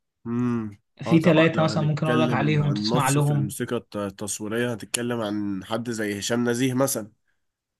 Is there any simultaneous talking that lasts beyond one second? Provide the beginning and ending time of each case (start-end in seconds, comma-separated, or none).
1.0-3.5